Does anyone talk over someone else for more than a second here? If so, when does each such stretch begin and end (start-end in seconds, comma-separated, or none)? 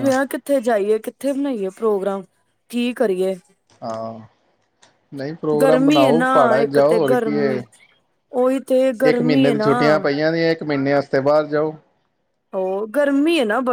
5.6-7.5